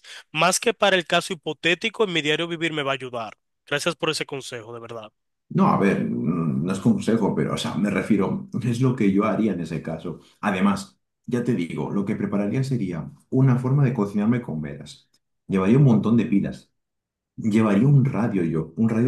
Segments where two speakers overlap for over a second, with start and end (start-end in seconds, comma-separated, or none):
none